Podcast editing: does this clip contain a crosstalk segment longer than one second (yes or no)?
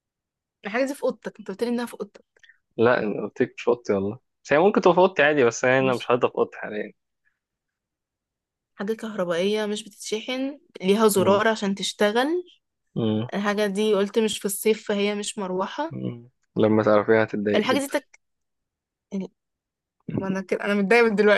no